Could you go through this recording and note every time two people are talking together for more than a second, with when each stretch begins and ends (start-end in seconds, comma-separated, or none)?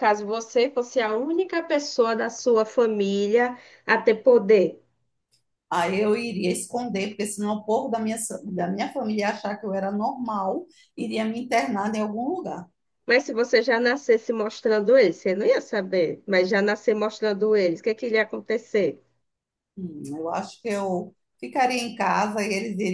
none